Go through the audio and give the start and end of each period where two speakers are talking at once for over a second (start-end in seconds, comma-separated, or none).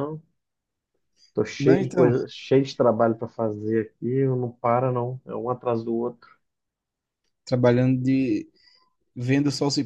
none